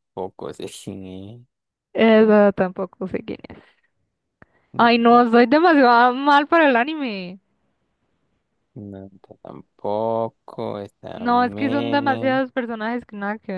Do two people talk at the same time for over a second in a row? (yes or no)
yes